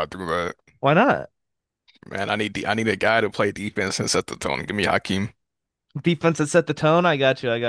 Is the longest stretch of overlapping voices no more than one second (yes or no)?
yes